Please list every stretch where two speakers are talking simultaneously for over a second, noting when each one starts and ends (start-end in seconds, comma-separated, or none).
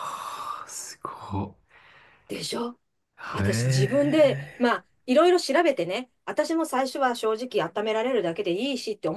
3.3-4.8